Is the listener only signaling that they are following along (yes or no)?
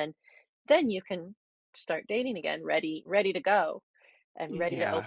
no